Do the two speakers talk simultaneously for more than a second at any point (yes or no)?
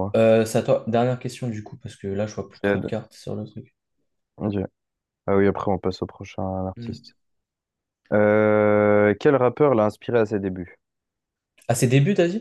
no